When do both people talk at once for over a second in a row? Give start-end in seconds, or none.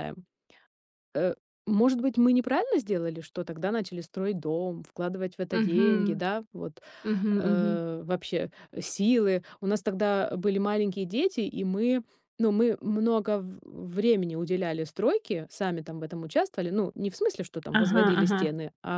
none